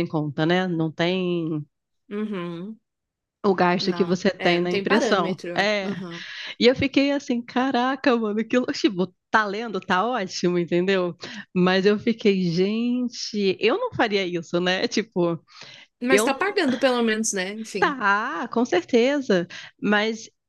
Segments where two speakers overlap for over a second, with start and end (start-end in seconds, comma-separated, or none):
3.8-5.9